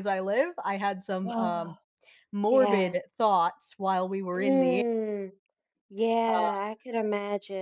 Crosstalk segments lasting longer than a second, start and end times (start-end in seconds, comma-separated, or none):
none